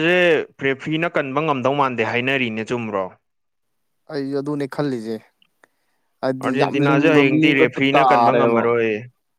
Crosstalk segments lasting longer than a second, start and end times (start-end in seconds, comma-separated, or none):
6.4-8.6